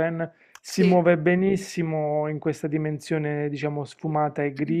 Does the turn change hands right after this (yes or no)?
no